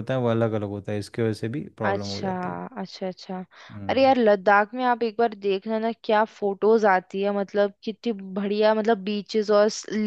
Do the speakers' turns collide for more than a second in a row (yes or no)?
no